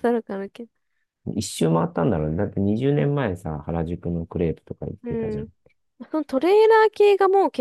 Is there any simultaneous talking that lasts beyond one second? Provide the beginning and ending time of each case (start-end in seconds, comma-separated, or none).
none